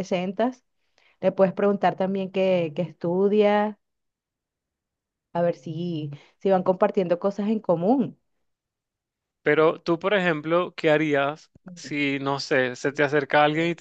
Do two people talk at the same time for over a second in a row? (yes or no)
no